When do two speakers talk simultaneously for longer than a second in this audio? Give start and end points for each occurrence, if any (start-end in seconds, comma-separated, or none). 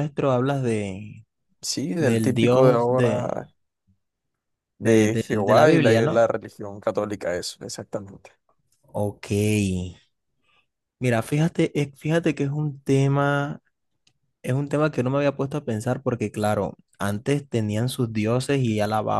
2.0-3.3, 4.8-6.2